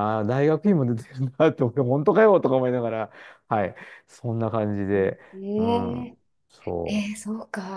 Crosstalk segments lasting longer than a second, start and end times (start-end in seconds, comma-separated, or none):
none